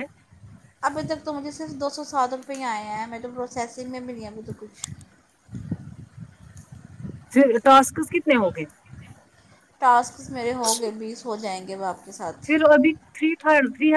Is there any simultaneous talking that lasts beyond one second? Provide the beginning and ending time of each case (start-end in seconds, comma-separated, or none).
none